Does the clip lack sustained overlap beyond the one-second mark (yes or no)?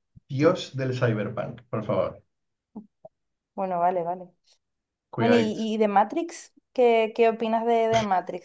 yes